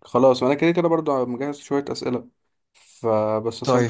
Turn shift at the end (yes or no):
no